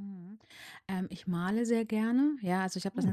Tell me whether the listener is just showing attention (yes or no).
yes